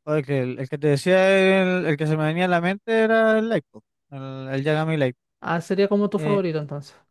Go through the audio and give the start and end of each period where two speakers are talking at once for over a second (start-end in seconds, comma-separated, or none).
none